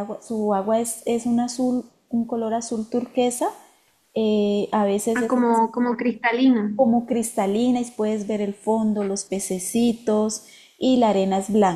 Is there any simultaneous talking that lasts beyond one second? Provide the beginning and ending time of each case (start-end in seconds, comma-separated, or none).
none